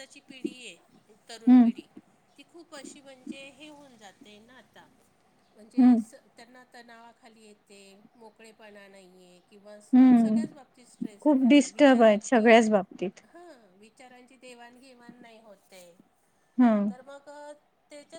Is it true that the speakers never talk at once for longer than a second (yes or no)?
no